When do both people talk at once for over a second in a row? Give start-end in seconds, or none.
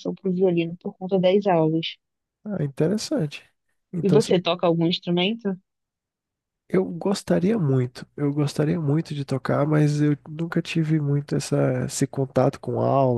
none